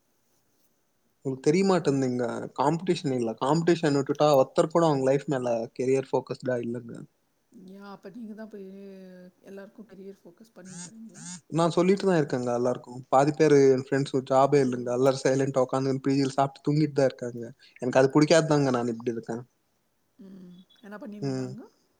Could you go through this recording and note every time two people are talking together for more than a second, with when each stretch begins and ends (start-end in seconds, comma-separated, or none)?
none